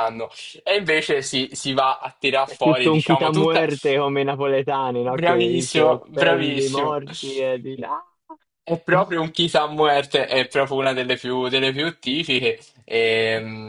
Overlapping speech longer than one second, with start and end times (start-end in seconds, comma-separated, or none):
2.4-3.6, 5.2-7.0